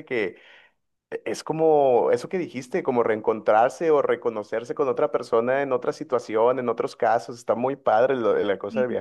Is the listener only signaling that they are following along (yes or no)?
no